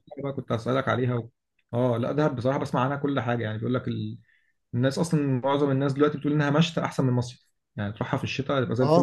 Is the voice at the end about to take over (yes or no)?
yes